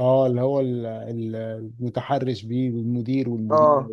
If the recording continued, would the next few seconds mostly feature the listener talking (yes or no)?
yes